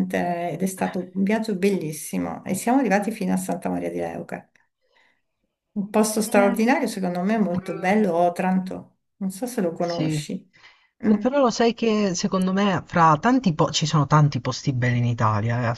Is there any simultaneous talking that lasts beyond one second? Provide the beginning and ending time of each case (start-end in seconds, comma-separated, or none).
none